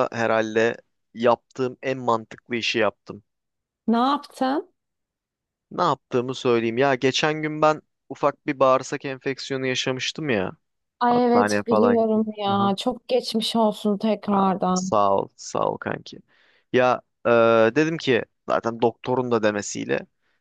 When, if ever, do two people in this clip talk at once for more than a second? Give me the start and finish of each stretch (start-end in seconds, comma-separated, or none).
11.1-12.7